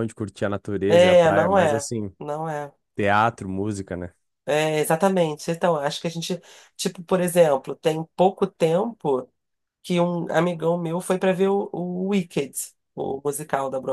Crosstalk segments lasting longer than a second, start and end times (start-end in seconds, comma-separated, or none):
0.9-2.1